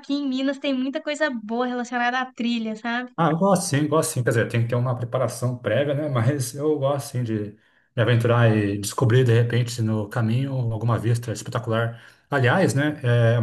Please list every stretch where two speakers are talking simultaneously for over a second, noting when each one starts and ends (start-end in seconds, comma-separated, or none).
none